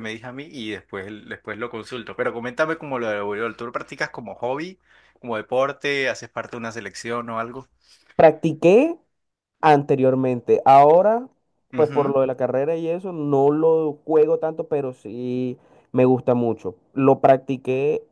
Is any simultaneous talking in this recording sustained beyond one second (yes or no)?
no